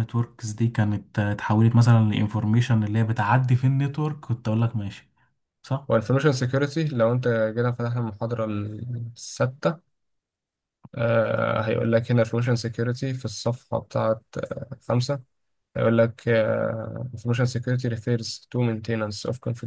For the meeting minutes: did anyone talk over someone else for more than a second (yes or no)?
no